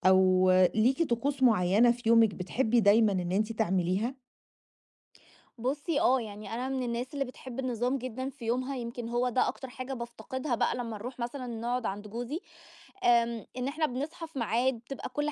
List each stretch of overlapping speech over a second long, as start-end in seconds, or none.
none